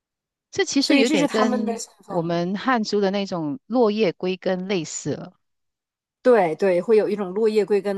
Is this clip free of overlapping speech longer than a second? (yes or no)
no